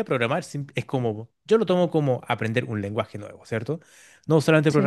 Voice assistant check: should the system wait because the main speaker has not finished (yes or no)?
yes